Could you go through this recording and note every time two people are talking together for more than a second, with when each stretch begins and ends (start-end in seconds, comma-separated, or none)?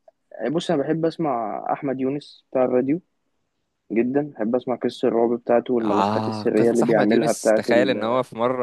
5.8-8.1